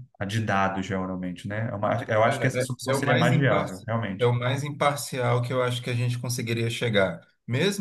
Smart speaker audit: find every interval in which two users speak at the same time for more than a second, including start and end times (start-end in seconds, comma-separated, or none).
2.3-4.3